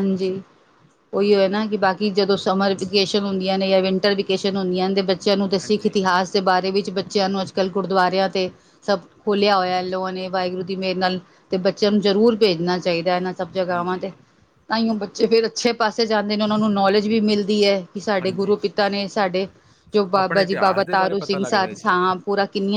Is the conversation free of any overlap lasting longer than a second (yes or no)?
no